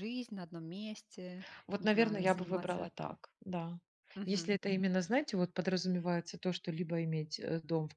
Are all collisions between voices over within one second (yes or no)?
no